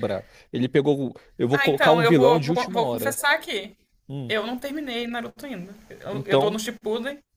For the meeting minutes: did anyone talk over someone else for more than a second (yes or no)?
yes